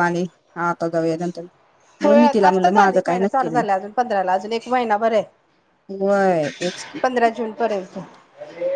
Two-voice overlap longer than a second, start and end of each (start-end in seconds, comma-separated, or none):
2.5-3.8